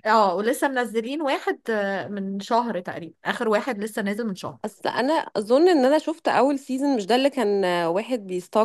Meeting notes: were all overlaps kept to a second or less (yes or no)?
yes